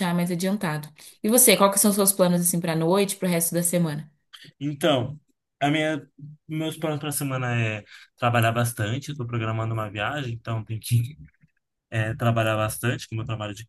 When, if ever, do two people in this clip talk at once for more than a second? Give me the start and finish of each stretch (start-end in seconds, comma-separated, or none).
none